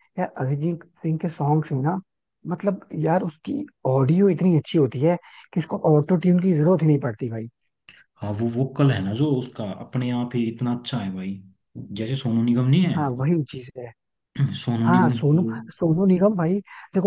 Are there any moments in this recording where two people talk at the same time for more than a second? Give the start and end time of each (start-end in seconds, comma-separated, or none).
none